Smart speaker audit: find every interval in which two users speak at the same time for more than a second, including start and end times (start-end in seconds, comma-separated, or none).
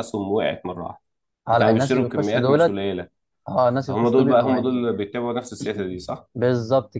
1.5-2.8, 3.8-5.0